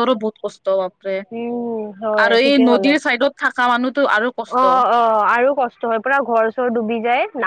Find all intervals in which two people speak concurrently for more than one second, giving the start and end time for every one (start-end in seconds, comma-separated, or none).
none